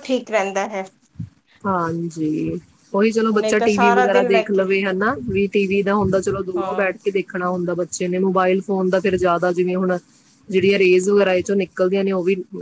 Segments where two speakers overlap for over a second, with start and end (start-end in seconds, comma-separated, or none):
3.3-4.7